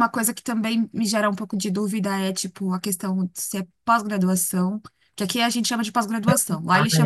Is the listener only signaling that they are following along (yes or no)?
no